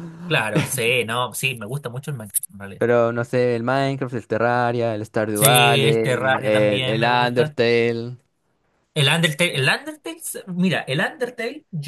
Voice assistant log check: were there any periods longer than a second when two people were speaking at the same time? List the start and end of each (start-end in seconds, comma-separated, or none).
5.3-7.6